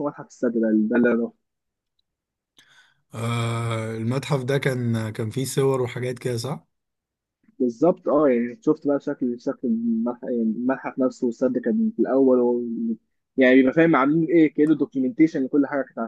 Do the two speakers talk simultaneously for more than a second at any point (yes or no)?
no